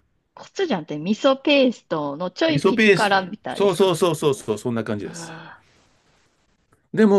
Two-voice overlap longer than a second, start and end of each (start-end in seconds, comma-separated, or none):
2.5-3.9